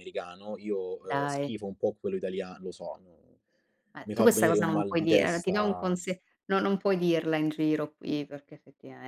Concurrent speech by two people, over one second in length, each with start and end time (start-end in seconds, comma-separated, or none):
4.0-6.0